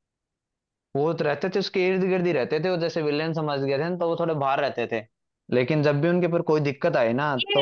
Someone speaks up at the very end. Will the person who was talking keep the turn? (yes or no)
no